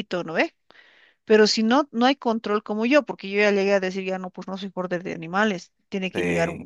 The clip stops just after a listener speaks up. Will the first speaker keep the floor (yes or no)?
yes